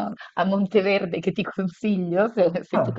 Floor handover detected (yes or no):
no